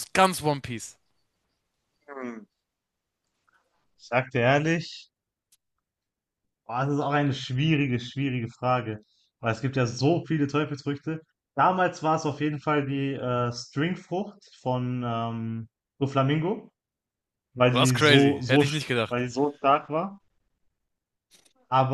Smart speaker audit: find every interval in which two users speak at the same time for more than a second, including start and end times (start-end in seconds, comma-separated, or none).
17.7-19.1